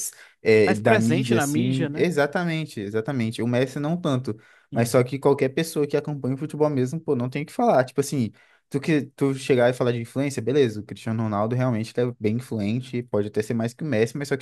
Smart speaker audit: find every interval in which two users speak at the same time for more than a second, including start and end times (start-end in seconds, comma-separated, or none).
0.6-2.1